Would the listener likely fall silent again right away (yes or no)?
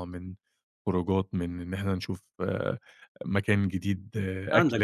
no